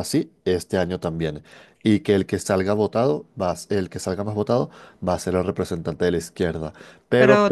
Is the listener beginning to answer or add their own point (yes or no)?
yes